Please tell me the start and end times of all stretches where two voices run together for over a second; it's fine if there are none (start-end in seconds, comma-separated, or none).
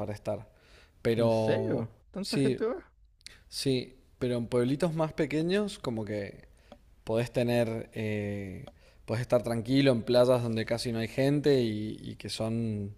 1.1-2.6